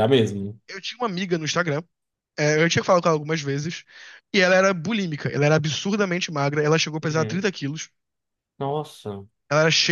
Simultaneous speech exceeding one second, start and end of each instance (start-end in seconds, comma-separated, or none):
none